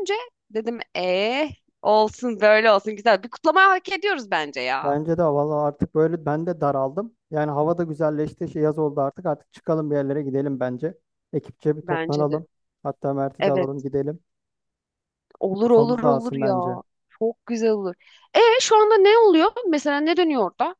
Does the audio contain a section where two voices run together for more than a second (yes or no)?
yes